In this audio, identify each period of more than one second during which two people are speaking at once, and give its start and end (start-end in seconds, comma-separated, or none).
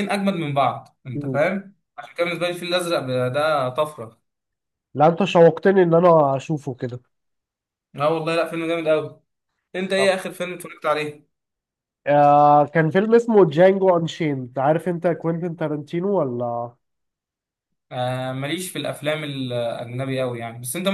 none